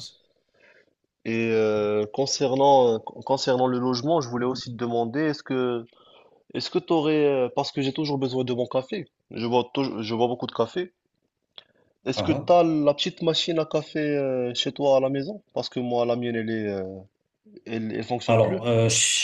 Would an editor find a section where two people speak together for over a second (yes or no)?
no